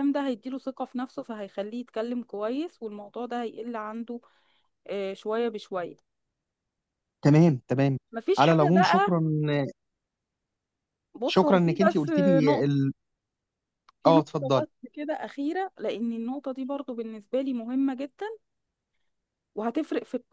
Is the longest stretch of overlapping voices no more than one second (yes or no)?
no